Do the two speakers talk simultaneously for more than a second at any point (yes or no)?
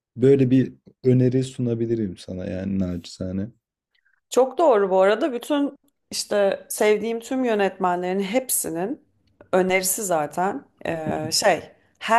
no